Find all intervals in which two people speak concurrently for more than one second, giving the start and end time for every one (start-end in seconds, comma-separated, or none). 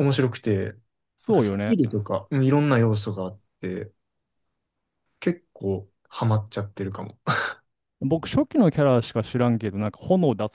none